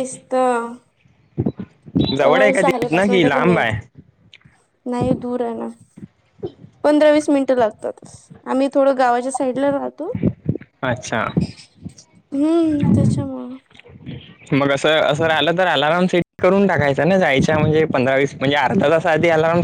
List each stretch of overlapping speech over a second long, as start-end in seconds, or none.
2.3-3.7